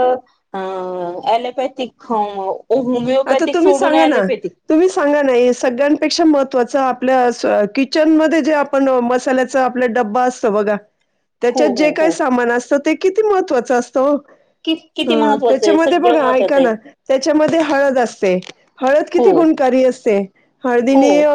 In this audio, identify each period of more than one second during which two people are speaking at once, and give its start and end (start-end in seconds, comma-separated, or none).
15.1-16.7